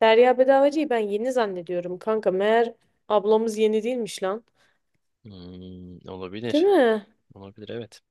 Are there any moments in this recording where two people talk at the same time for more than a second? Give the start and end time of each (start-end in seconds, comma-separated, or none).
none